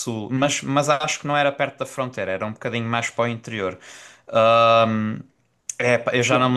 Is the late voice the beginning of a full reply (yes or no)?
no